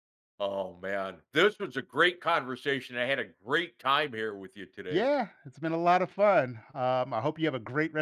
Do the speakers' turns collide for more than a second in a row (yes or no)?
no